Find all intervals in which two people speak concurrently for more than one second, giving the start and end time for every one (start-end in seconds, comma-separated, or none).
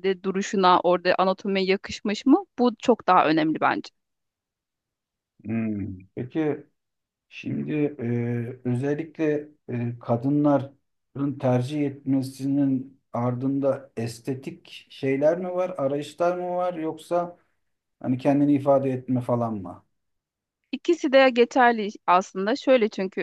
none